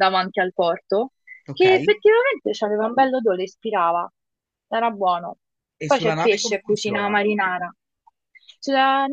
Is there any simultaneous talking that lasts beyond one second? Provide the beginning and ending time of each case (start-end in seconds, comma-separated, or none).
5.9-7.2